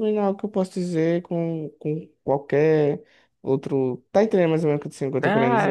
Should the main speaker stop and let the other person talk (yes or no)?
yes